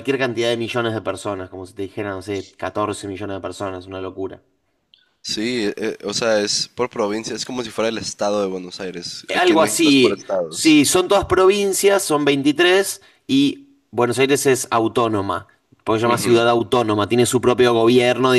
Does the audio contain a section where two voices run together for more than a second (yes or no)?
yes